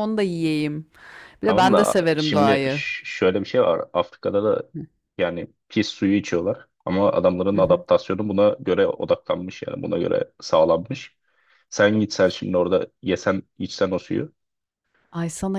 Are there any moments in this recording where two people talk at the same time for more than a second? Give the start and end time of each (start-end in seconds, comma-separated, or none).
1.4-2.8